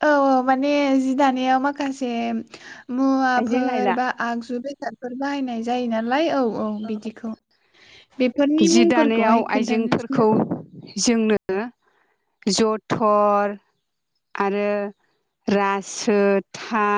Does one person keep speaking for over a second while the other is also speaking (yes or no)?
yes